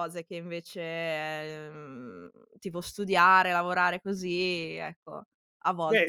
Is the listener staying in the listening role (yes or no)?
no